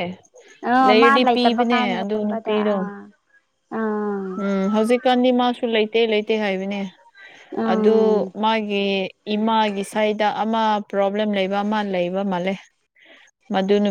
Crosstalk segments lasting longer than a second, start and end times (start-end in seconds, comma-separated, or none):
0.8-2.7